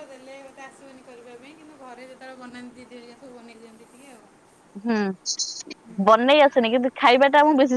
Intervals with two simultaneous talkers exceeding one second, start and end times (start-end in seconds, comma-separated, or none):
none